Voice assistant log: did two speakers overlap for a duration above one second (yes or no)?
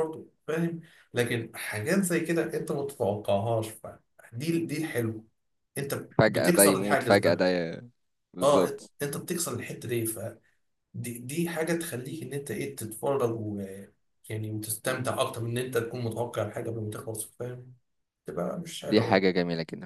yes